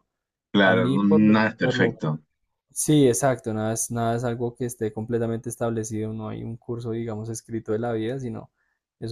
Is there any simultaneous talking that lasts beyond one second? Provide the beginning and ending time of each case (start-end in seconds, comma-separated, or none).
0.6-2.0